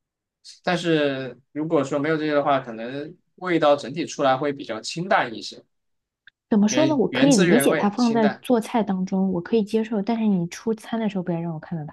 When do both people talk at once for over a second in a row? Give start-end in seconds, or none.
6.7-8.4